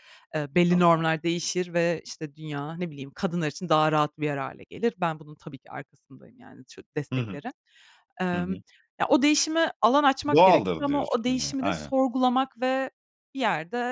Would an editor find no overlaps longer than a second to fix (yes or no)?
no